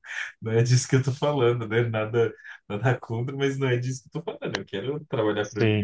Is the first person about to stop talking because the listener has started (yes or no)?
no